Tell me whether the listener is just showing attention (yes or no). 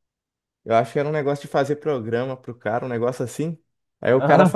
yes